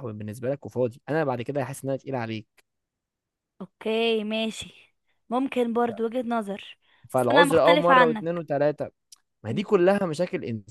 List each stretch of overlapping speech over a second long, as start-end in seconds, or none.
7.1-8.4